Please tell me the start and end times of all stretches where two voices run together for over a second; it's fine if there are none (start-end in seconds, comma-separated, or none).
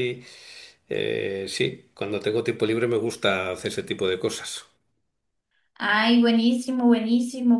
none